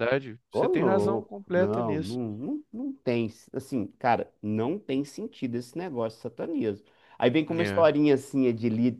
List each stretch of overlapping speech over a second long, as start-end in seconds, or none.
0.5-2.2